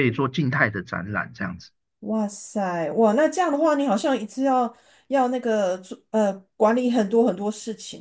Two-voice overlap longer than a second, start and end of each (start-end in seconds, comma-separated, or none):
none